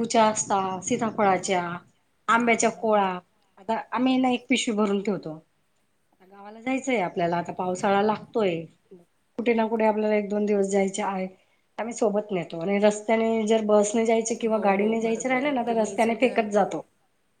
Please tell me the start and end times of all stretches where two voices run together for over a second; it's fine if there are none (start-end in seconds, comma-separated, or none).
14.5-16.4